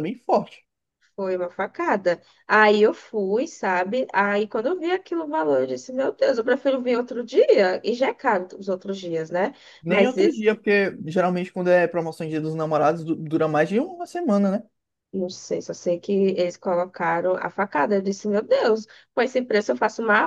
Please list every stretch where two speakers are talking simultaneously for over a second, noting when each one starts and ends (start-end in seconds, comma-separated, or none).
none